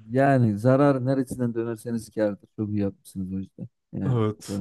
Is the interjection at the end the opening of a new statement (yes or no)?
yes